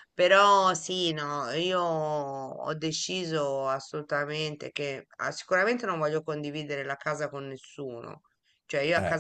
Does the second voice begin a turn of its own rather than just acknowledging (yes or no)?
no